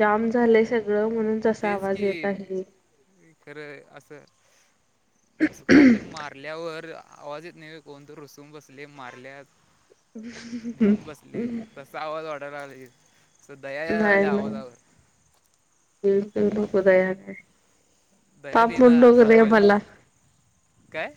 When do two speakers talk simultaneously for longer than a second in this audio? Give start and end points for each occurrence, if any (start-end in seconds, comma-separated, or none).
18.5-19.8